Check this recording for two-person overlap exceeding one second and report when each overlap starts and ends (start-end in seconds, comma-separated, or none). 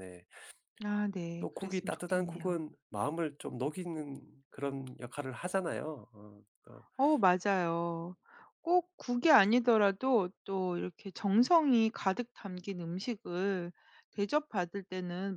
1.4-2.6